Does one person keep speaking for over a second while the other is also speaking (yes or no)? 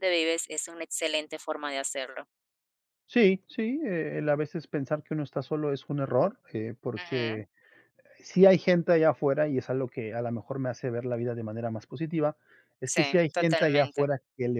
yes